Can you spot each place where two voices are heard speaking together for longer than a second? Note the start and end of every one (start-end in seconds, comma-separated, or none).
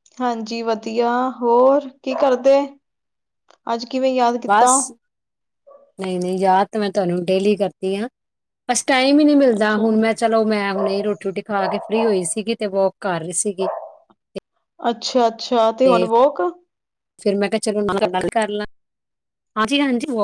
none